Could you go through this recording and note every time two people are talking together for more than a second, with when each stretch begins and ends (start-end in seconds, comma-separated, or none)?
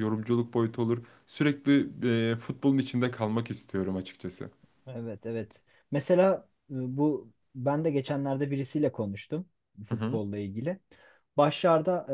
none